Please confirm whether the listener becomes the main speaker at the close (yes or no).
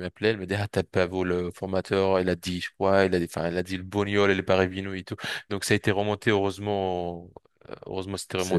no